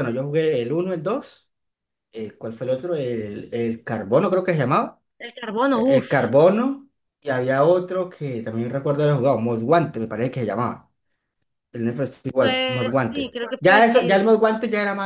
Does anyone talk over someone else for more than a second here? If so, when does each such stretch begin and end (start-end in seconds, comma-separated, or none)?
12.4-14.2